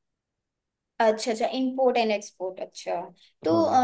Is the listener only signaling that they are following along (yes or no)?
yes